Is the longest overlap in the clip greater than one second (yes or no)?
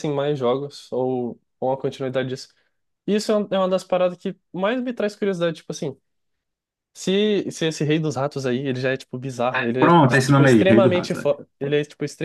yes